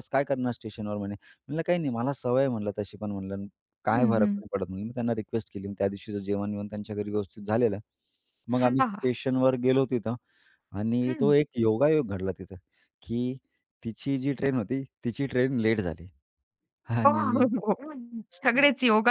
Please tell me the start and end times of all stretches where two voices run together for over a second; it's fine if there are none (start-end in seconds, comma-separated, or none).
none